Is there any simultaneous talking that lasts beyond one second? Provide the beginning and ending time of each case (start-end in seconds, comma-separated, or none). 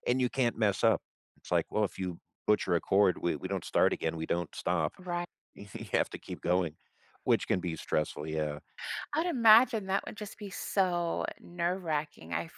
none